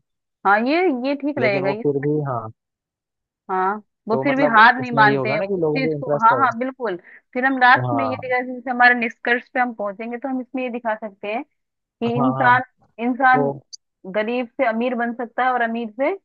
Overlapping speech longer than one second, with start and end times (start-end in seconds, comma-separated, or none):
4.1-6.4